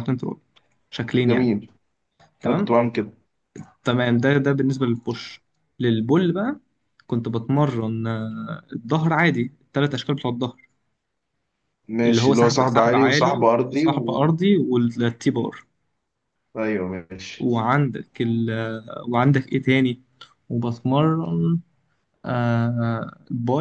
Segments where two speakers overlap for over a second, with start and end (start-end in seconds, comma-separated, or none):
12.1-14.2